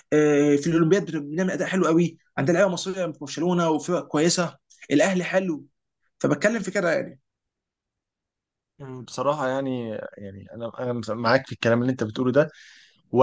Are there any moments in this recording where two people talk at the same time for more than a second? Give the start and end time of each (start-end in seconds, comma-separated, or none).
none